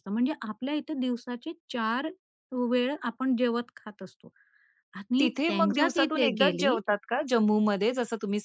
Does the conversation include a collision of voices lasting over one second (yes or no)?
yes